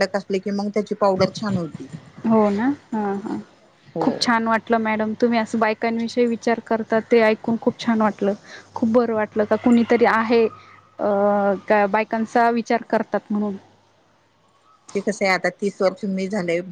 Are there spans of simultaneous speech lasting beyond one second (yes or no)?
no